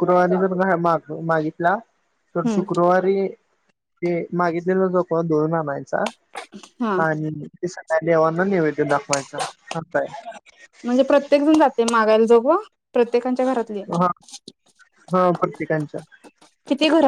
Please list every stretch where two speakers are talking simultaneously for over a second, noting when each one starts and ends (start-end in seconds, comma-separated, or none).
none